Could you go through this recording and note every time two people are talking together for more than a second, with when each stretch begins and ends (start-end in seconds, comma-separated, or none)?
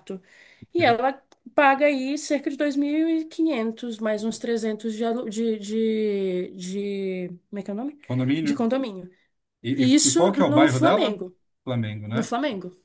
9.8-11.2